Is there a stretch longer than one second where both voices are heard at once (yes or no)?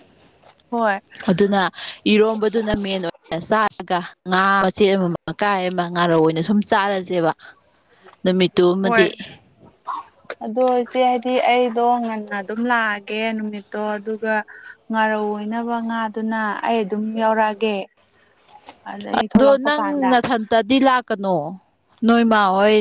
no